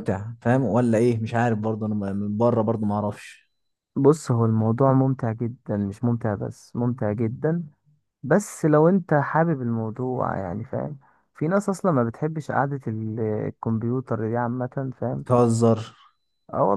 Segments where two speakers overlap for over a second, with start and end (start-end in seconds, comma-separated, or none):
none